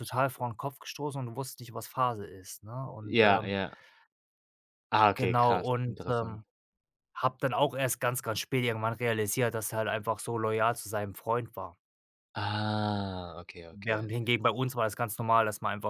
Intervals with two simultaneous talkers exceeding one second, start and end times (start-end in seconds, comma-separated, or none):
5.1-6.4